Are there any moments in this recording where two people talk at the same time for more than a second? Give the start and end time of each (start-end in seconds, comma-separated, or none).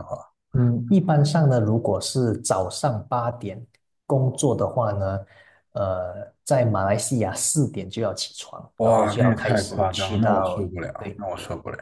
8.8-10.7